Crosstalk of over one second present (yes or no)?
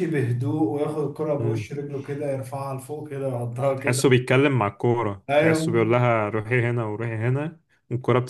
no